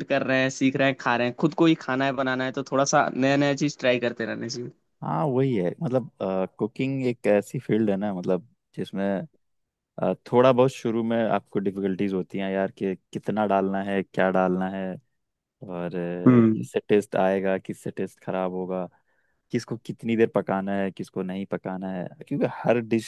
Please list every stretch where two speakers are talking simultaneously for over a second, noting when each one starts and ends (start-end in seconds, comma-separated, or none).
none